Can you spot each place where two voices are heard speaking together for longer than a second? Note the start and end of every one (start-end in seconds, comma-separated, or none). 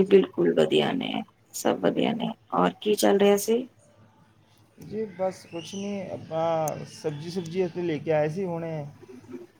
none